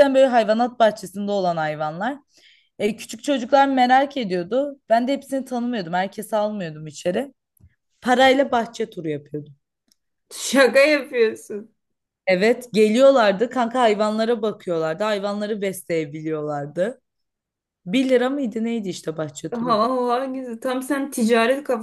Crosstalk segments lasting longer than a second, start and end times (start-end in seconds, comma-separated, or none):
none